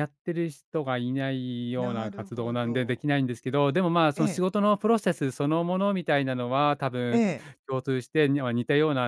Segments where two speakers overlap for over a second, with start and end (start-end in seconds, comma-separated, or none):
1.8-3.1